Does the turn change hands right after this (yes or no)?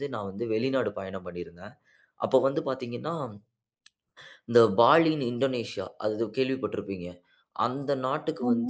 no